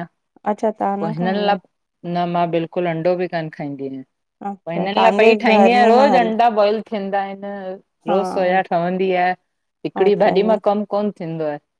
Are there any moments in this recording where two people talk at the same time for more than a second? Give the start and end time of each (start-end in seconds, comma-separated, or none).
4.7-6.3